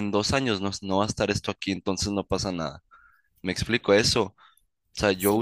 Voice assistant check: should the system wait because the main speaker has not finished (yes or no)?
yes